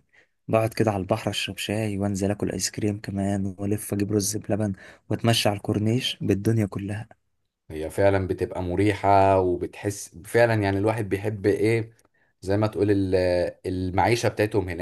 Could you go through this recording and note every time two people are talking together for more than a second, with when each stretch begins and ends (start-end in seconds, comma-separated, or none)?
none